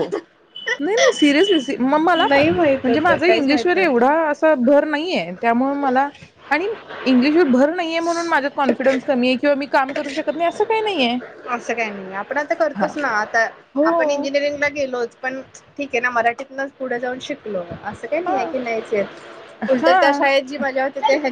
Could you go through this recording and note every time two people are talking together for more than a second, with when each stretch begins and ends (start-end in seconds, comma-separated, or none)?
2.1-4.0